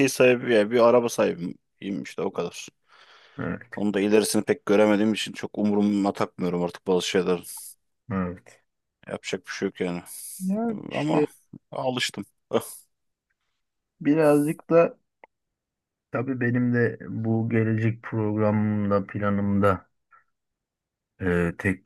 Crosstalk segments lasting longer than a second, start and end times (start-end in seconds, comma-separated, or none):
none